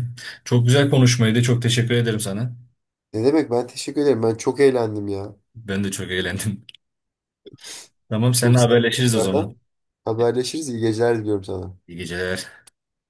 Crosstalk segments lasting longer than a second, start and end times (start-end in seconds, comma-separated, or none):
8.3-9.6